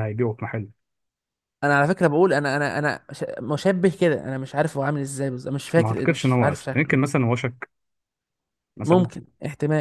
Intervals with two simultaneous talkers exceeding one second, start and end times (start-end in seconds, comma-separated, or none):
5.8-7.0